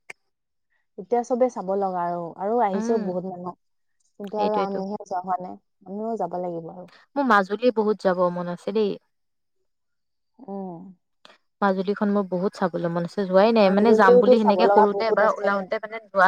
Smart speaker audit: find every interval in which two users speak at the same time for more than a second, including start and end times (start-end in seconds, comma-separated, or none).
13.7-15.5